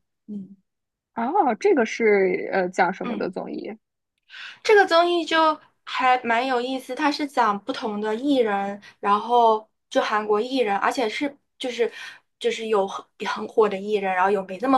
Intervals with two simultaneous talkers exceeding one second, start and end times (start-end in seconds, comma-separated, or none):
none